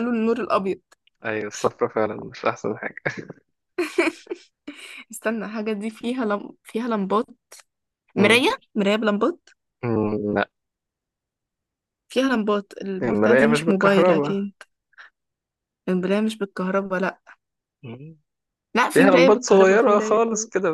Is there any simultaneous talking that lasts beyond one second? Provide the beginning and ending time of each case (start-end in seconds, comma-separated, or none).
13.0-14.4, 18.9-20.2